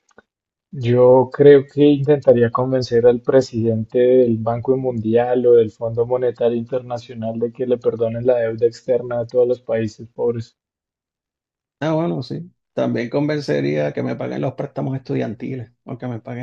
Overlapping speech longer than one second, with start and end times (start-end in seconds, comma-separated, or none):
none